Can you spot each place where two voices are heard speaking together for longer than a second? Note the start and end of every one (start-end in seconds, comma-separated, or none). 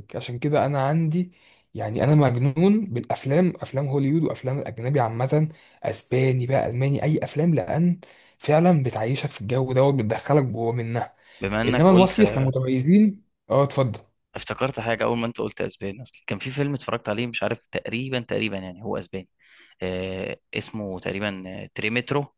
none